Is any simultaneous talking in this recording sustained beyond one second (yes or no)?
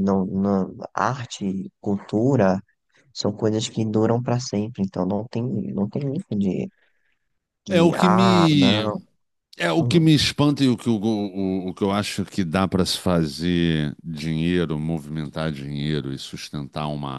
yes